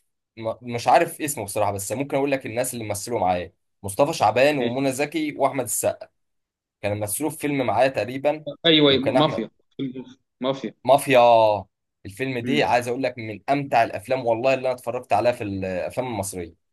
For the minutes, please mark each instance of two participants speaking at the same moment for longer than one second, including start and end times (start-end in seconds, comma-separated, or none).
none